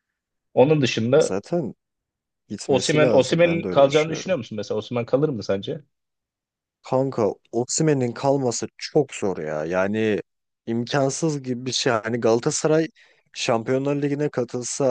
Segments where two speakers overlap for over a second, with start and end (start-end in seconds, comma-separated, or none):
2.7-4.4